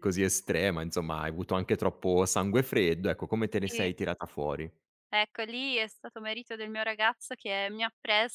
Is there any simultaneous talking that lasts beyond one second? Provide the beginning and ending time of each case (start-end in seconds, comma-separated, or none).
none